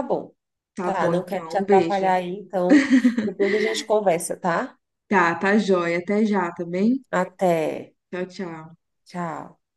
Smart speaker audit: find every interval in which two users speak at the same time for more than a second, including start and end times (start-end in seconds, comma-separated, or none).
0.8-2.1